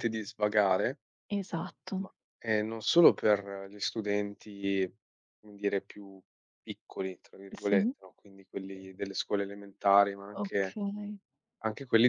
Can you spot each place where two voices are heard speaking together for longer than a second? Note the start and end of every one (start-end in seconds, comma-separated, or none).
none